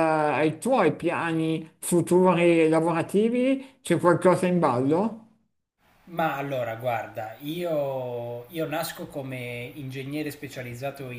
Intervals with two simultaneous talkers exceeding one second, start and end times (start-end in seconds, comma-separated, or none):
none